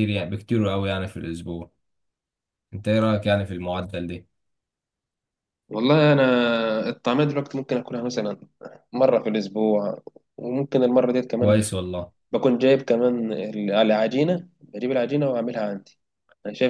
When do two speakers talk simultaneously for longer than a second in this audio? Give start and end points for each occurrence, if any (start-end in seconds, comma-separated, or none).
none